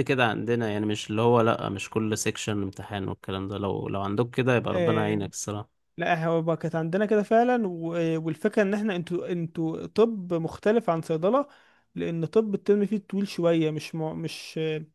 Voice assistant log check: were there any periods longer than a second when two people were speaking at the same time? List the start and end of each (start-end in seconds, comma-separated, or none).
none